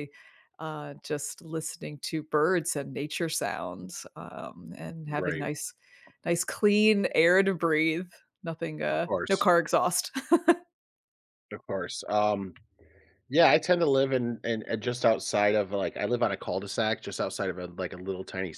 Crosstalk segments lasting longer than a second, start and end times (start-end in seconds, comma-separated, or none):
none